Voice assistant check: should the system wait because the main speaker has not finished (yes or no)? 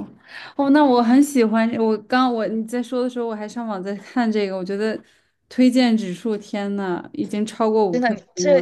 no